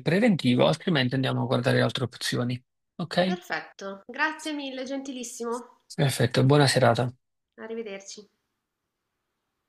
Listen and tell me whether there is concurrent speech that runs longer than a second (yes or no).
no